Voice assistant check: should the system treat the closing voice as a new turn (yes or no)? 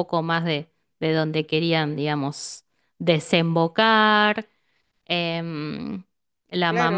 yes